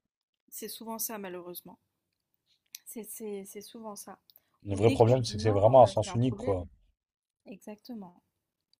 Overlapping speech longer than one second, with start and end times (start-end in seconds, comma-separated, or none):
4.7-6.5